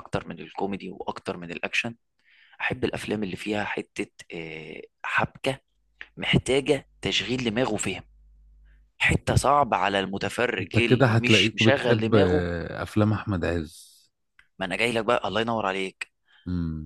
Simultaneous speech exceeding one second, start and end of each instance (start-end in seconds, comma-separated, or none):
10.6-12.5